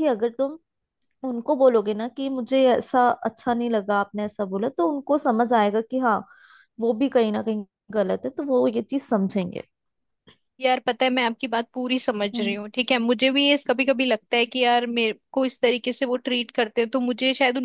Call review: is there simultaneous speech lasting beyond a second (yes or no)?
no